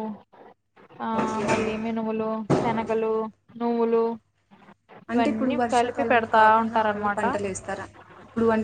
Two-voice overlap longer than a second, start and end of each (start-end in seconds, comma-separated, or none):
5.1-7.2